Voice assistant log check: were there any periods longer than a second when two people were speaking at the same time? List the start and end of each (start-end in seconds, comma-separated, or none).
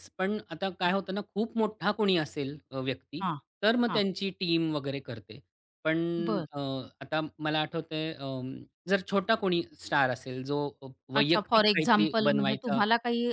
11.1-12.8